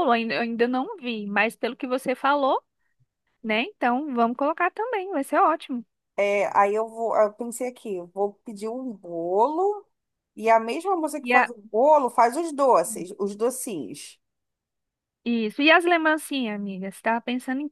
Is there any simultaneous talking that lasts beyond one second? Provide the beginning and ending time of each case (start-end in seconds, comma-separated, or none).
none